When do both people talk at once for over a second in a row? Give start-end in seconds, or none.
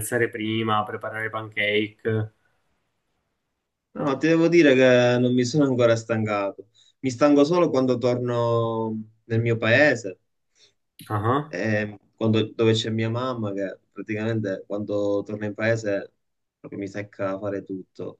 none